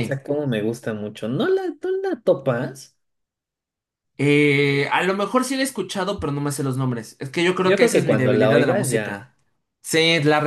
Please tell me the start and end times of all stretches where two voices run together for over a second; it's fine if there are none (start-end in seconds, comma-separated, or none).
7.6-9.3